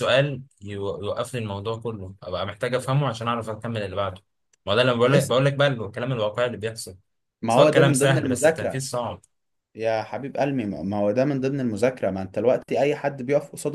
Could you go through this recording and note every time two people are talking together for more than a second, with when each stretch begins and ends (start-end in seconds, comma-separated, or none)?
7.5-8.9